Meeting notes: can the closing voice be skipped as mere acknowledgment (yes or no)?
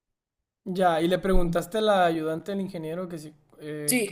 no